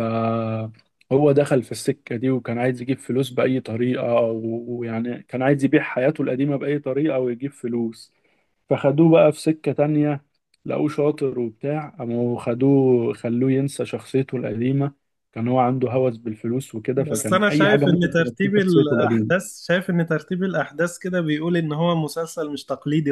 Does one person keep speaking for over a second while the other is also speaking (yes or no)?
yes